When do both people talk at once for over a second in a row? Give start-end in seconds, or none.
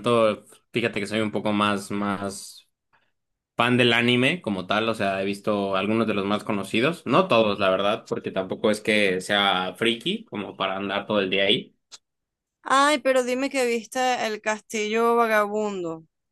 none